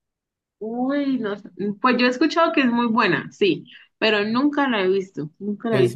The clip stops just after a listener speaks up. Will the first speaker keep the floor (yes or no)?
no